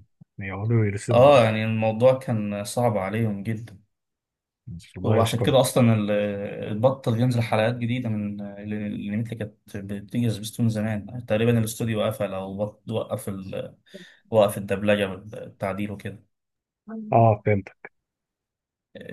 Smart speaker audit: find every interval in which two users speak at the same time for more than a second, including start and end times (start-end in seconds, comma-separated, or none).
none